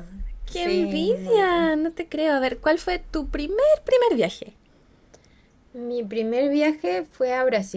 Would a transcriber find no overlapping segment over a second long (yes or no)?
no